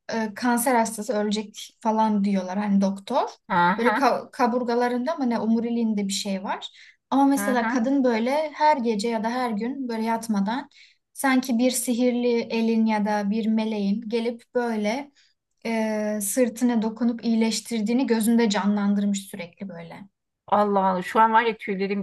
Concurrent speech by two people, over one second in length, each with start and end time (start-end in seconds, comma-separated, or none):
none